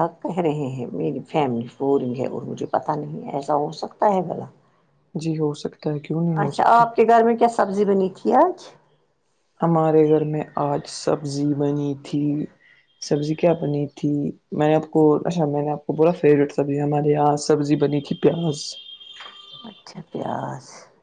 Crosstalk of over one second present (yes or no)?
no